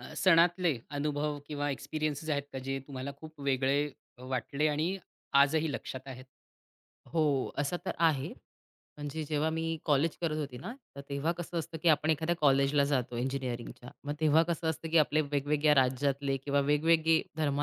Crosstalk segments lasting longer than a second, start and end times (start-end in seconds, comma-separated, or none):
none